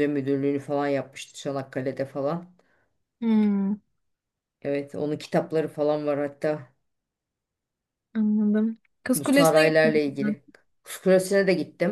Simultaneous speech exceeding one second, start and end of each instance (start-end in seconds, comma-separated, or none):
9.2-10.3